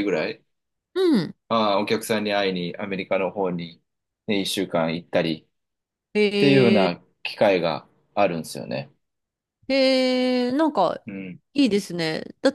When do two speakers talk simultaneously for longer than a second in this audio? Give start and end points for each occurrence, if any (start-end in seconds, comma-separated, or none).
none